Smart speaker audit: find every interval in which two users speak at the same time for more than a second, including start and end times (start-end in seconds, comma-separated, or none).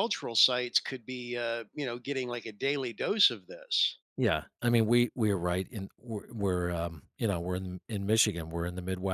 none